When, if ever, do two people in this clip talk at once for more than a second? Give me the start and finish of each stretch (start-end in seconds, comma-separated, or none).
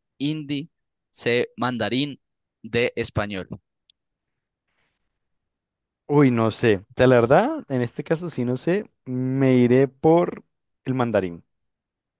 none